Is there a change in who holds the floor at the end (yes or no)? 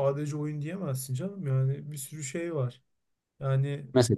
no